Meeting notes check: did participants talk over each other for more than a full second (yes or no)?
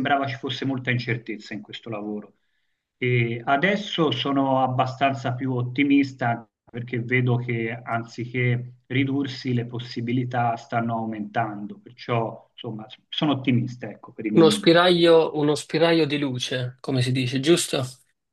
no